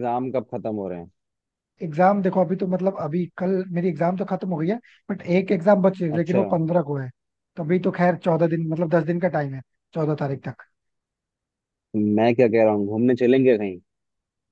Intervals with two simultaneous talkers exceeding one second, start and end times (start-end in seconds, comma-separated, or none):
none